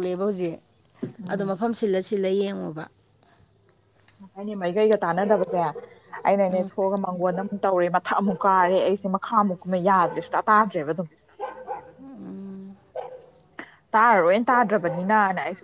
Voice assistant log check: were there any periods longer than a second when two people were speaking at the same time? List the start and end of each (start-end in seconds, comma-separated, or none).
none